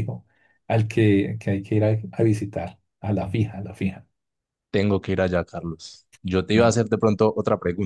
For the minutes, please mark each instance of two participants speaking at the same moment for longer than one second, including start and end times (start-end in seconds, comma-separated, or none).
none